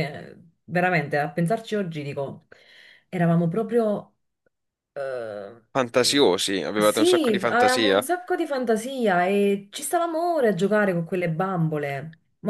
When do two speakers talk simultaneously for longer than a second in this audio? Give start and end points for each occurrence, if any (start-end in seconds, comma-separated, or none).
6.8-8.1